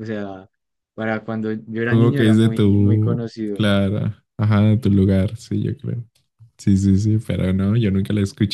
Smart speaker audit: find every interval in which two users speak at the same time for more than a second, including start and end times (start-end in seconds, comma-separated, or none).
1.8-3.6